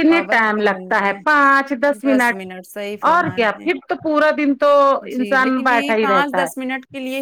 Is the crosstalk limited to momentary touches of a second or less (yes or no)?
no